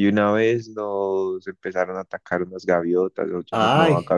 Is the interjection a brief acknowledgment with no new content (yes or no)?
yes